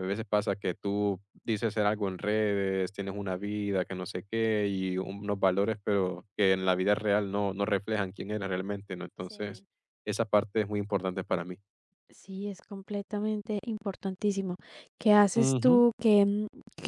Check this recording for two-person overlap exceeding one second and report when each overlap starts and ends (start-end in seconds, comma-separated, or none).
none